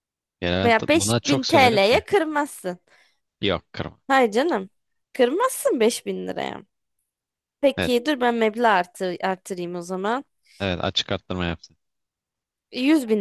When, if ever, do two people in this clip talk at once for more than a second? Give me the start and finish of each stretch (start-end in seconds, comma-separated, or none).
0.6-2.0